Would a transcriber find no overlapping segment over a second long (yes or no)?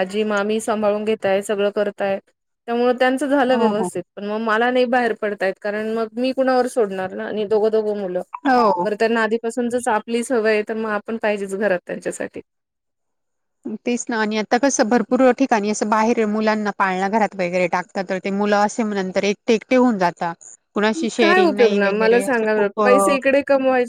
no